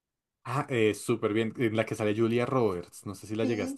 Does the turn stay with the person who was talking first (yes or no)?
no